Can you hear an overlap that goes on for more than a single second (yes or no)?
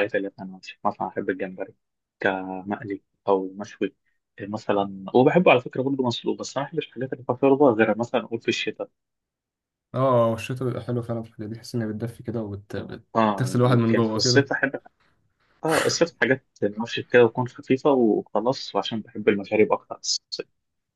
yes